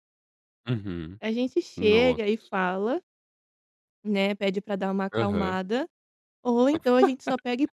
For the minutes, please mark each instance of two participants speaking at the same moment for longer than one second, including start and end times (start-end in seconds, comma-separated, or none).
none